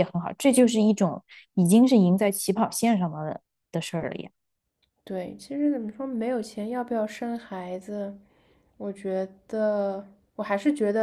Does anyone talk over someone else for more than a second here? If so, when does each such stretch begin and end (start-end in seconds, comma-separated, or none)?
none